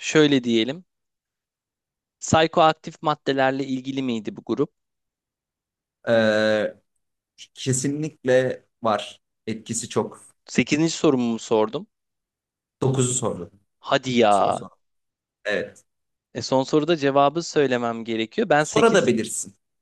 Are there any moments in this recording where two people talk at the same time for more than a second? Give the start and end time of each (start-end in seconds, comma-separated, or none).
none